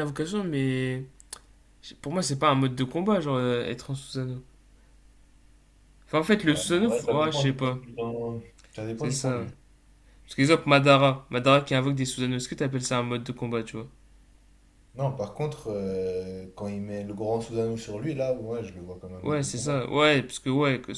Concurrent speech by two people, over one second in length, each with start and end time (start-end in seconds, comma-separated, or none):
6.4-7.8